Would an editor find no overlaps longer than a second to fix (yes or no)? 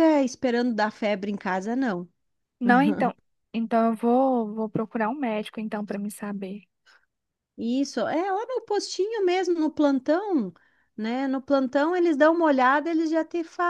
yes